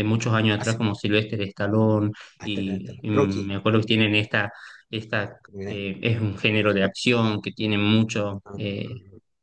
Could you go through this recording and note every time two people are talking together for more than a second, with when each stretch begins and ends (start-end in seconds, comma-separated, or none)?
2.4-3.9